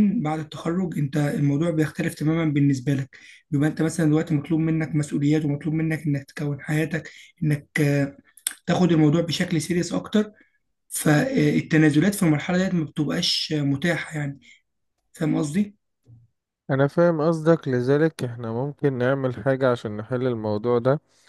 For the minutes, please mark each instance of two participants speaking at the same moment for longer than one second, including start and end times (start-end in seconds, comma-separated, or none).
none